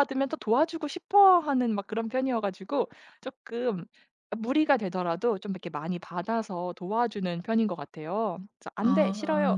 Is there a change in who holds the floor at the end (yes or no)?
no